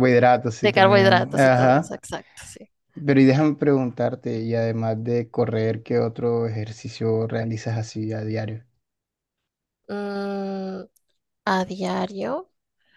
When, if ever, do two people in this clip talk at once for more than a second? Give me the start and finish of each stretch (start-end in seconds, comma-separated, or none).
0.6-2.0